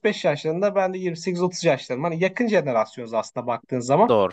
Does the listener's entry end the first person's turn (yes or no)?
no